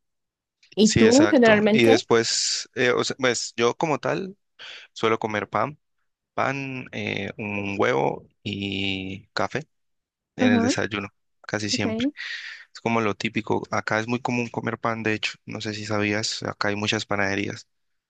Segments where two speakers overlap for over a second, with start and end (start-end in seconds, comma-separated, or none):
0.8-2.0